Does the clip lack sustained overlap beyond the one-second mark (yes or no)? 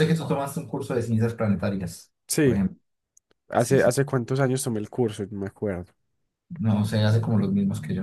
yes